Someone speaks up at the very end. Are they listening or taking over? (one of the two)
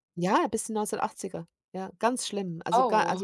listening